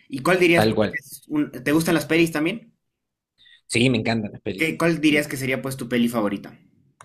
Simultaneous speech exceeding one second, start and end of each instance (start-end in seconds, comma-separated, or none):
none